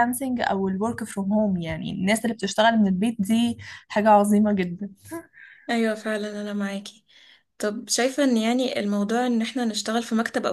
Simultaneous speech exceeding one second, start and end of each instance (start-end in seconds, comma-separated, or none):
none